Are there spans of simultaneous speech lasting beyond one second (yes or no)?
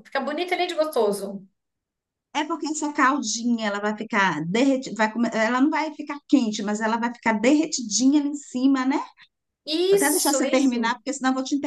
yes